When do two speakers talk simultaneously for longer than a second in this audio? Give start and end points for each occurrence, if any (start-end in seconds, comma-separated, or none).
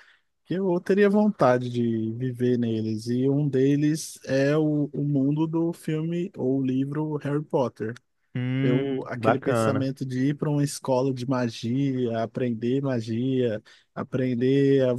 8.6-9.9